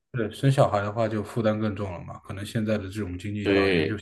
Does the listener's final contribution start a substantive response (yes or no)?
no